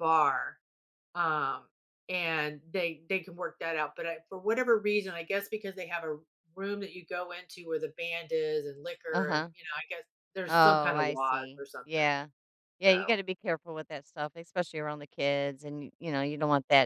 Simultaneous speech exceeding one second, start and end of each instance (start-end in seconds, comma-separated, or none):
10.5-12.1